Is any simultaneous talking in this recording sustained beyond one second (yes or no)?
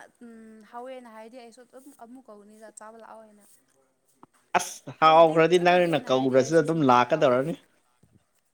yes